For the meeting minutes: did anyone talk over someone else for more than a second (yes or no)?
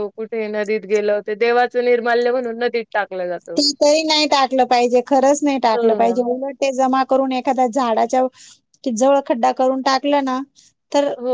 no